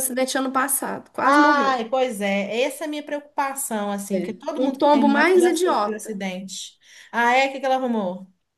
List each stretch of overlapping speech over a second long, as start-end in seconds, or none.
4.1-6.2